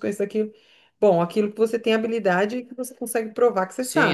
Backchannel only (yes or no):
no